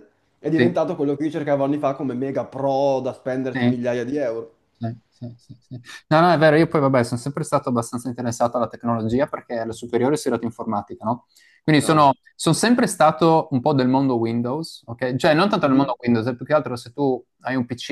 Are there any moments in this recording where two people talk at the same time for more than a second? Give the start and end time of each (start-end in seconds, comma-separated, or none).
none